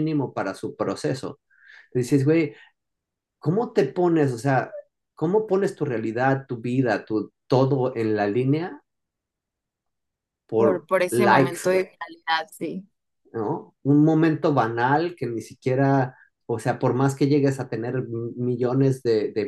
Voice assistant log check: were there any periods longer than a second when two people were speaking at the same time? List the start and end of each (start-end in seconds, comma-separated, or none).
10.6-11.9